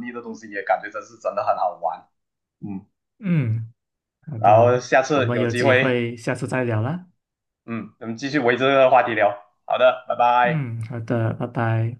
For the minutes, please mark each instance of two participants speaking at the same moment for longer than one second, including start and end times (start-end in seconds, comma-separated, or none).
4.3-6.0